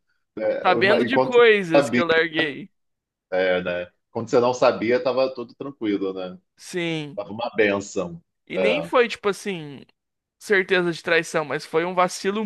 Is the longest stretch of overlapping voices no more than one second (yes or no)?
no